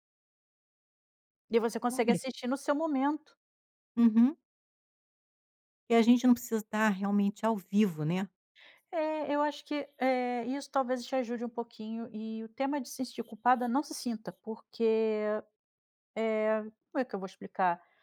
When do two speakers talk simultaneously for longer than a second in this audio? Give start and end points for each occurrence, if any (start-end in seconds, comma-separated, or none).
none